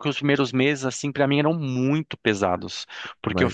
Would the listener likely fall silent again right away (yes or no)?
yes